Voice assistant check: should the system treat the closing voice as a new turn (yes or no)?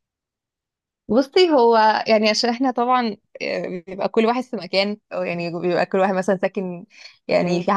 no